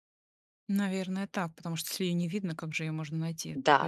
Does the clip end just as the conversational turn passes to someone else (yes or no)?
yes